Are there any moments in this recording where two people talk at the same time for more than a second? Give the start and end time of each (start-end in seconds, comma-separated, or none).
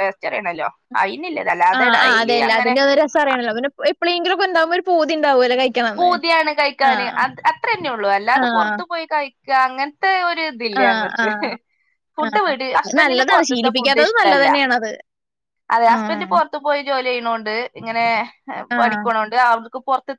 12.3-14.5